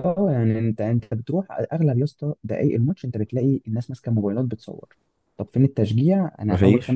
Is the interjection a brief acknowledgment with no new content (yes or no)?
yes